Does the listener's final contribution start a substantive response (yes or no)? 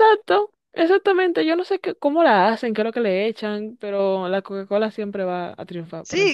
yes